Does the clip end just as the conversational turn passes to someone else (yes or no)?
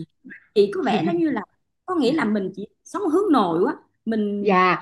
yes